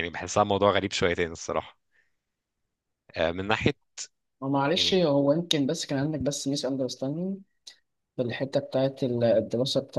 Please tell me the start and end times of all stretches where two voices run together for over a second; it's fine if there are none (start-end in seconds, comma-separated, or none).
none